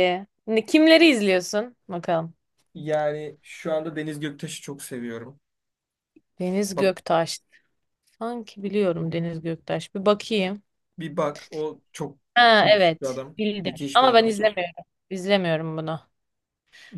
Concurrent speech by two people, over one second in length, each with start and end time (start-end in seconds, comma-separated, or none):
12.6-14.4